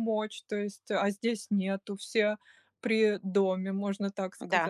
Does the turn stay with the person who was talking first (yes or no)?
no